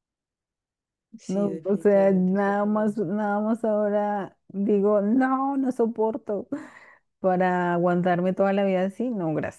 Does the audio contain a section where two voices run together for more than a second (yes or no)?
yes